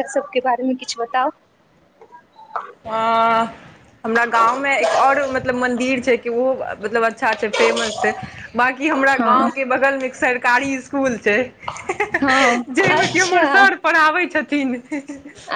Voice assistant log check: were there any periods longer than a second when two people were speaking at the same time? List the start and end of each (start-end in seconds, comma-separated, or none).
12.2-13.7